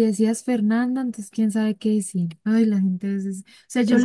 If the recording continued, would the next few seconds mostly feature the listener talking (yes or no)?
no